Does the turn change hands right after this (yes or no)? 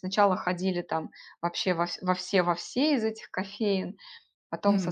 no